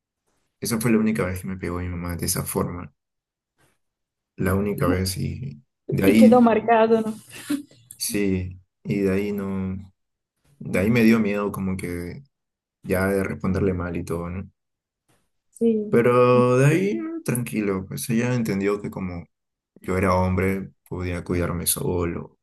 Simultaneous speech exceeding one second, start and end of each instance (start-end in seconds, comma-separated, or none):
none